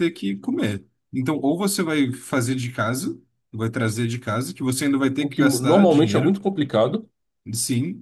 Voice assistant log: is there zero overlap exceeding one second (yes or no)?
no